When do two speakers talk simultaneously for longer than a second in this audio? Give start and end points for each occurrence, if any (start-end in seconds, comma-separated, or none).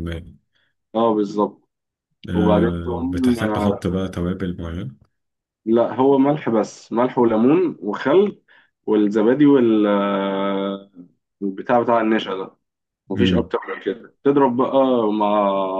2.3-3.8